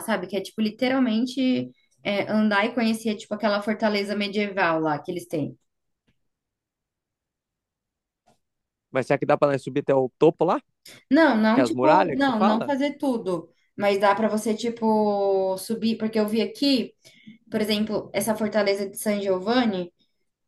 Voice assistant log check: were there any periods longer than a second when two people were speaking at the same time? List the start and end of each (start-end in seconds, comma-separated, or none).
11.5-12.7